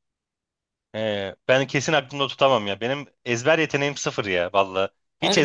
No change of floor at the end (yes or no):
no